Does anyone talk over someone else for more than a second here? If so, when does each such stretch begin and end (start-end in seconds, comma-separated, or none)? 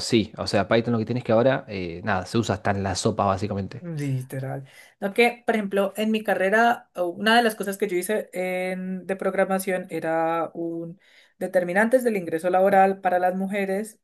none